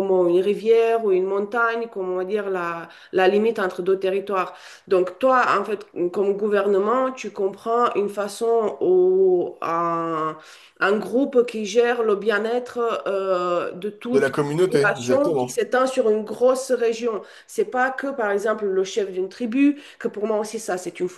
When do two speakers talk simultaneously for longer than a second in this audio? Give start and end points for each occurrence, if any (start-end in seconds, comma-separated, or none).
14.1-15.6